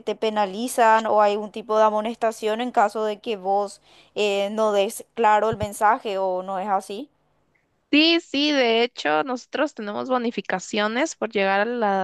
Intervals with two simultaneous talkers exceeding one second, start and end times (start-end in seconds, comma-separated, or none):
none